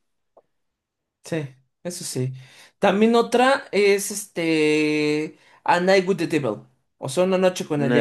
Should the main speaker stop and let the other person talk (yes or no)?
yes